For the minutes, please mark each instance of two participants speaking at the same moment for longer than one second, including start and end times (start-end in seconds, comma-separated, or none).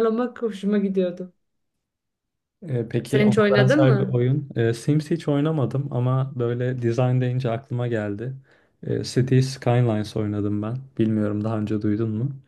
3.0-4.2